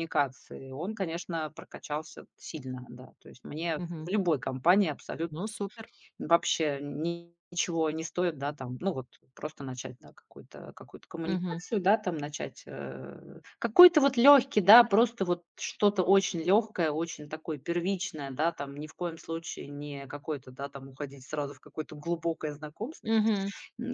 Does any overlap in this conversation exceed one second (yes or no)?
no